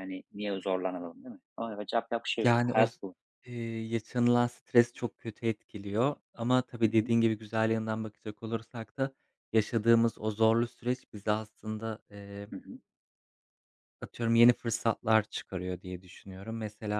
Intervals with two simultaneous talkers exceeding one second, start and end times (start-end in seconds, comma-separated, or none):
none